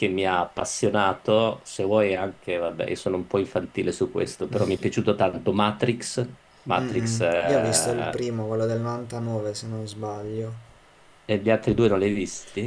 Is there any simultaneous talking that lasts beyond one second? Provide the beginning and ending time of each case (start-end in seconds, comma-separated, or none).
6.8-8.2